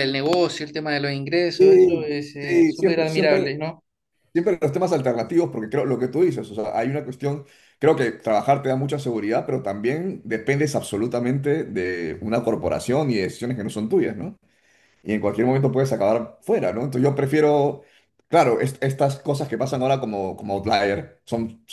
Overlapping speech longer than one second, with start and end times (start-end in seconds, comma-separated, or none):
1.6-3.5